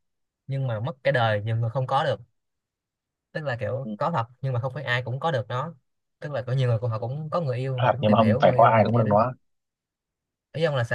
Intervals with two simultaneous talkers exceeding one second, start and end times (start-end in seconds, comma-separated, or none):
7.8-9.2